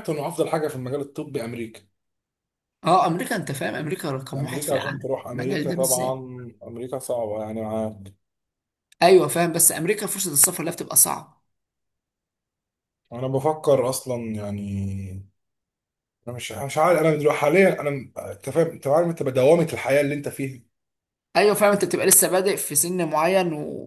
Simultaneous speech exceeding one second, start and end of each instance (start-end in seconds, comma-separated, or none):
4.3-6.1